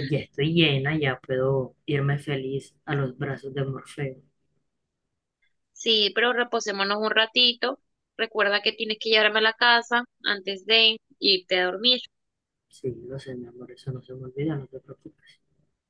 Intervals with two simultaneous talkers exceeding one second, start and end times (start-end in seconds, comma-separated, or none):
none